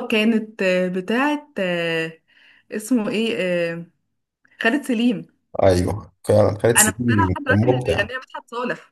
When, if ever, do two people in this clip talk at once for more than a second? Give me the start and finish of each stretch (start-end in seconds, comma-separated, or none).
6.8-8.1